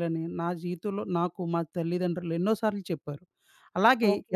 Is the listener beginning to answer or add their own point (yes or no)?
yes